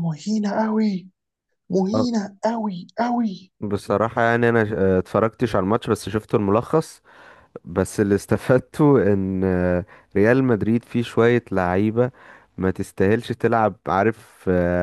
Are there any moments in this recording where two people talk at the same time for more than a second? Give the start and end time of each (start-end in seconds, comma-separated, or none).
none